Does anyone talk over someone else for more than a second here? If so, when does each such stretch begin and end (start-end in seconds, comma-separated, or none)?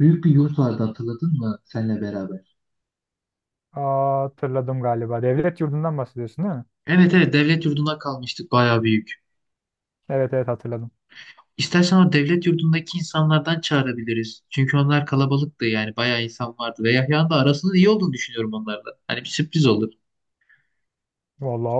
none